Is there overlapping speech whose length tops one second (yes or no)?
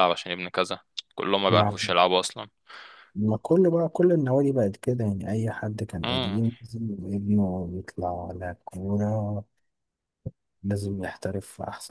no